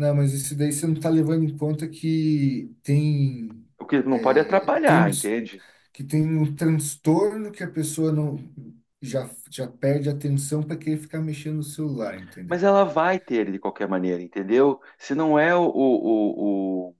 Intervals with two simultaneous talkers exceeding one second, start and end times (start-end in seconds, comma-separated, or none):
4.1-5.3